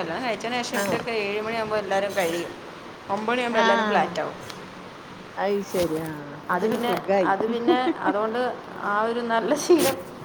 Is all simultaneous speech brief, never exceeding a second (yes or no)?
yes